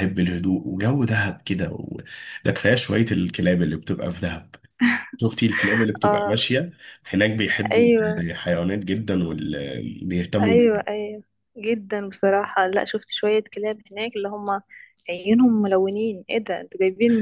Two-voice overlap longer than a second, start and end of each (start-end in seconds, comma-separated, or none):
none